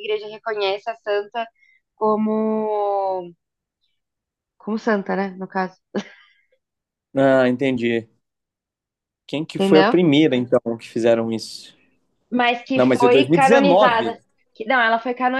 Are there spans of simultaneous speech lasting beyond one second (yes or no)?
yes